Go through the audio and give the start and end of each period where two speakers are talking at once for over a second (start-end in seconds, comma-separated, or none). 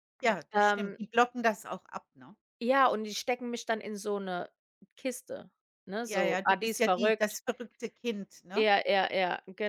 6.0-7.4